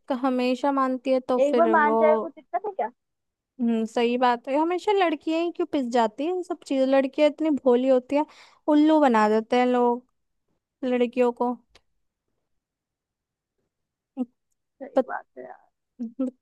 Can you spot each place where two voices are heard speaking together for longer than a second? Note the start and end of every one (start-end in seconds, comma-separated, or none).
none